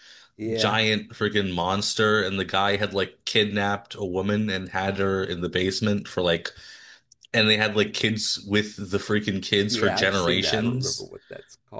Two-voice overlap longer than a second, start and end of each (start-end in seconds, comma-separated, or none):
9.6-11.1